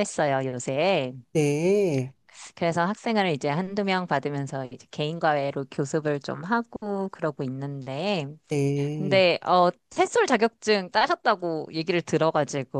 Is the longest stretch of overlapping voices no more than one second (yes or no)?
yes